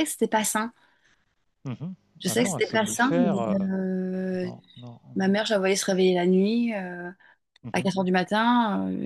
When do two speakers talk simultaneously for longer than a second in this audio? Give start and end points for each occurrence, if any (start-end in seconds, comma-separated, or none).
2.2-3.7